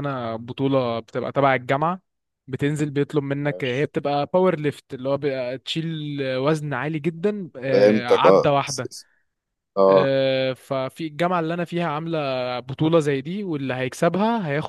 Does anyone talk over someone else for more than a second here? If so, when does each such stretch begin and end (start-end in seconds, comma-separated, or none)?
7.7-8.9